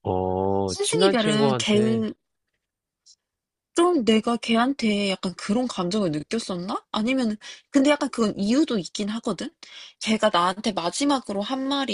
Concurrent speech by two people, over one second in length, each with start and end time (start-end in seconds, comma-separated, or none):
0.7-2.1